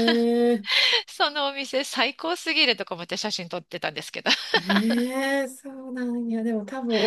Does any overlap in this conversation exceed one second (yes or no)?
no